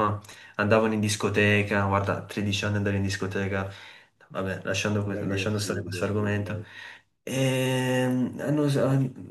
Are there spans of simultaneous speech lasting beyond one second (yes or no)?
yes